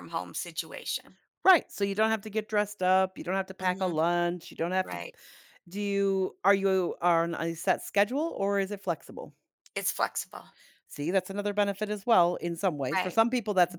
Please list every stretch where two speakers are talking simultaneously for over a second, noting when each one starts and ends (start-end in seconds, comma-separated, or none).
none